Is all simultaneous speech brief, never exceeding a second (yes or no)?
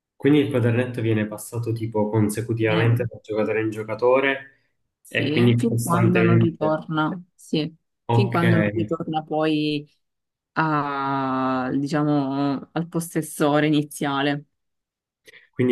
no